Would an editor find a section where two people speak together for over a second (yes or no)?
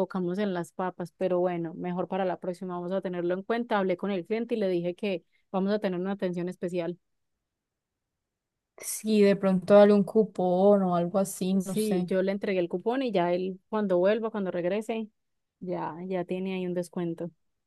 no